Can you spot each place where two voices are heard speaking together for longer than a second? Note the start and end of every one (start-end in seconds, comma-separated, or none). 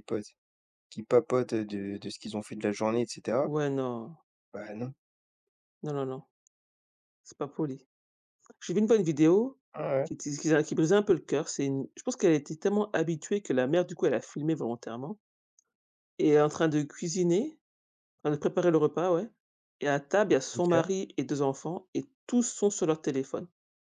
none